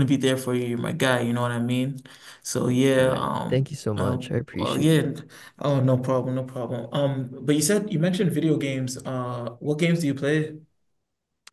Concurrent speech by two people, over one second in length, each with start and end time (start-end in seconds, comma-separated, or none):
3.0-5.1